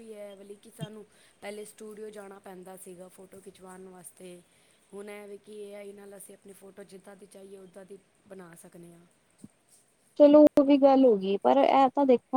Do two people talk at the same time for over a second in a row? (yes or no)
no